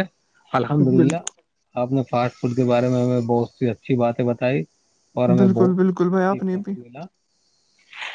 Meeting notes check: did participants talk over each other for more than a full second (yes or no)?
yes